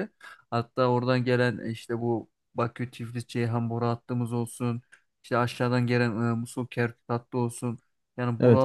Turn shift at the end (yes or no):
no